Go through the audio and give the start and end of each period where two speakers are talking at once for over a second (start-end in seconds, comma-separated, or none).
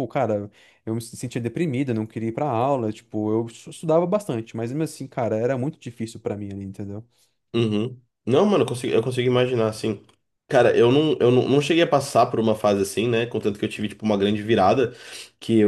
none